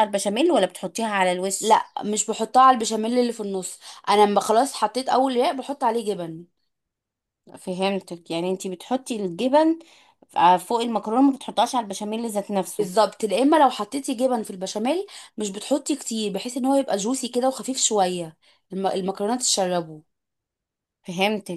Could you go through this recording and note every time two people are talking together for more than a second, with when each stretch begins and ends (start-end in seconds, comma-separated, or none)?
none